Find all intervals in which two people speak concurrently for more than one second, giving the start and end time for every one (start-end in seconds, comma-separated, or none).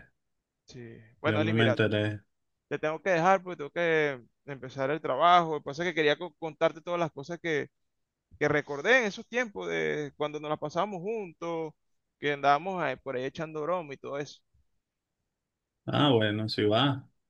none